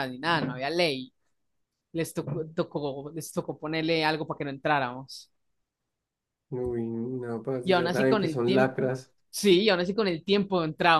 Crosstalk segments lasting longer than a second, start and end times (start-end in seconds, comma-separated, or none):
7.6-8.9